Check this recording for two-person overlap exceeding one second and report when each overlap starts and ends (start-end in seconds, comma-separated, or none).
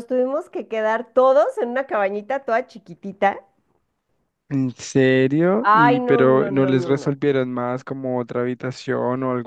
5.6-7.2